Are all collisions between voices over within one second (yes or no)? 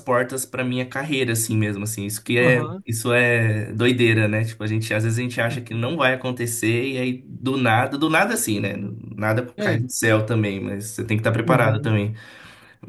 yes